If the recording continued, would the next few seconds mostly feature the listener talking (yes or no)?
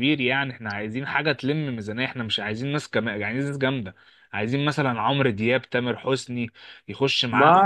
no